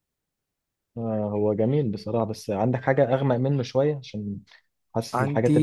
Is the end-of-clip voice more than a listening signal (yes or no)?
no